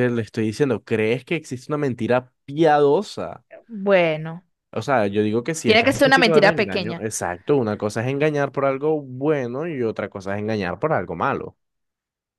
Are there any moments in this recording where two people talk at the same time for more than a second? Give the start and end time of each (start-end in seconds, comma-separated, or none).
5.6-7.0